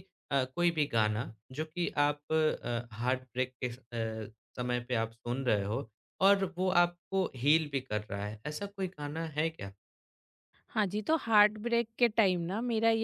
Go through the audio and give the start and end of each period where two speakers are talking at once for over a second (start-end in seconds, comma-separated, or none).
none